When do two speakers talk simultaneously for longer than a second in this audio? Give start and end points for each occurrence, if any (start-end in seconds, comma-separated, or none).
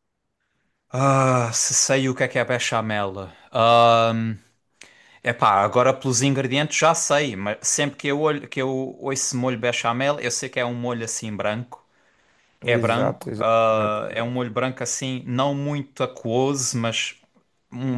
12.6-14.5